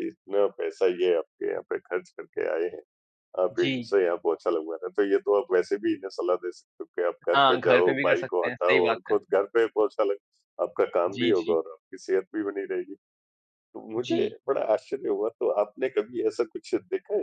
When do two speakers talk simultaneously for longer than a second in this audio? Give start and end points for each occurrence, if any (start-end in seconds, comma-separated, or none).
7.3-9.2